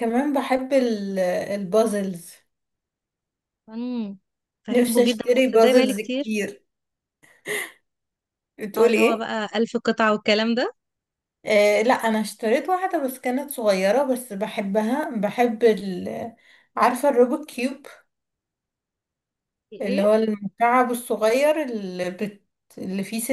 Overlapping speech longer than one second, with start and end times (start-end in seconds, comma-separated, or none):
4.7-6.4